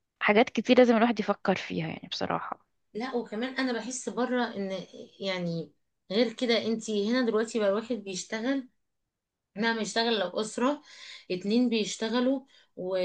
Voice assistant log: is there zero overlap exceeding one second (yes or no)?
yes